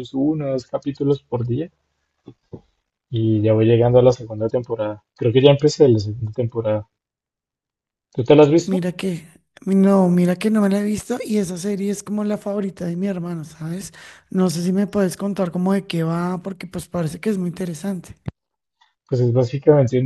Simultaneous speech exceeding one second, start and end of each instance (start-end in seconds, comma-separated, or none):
none